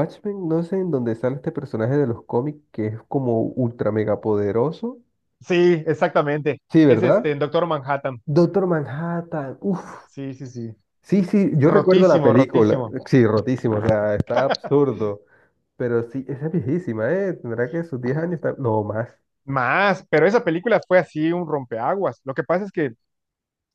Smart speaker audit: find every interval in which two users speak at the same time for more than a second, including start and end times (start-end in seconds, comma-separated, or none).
11.6-12.9